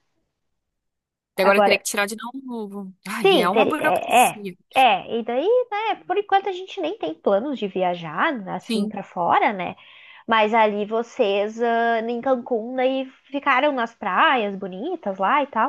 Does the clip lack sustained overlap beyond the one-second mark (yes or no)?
no